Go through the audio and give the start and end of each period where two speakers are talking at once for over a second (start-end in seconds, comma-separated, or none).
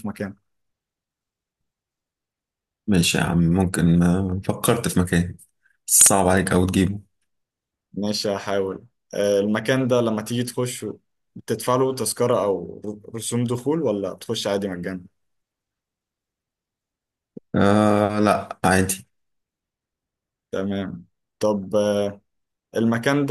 none